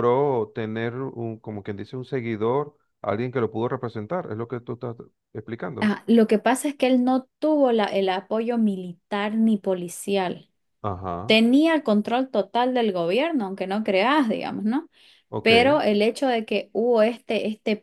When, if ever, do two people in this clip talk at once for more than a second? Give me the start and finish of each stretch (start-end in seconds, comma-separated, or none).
none